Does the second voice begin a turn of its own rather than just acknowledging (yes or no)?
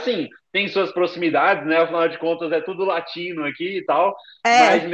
no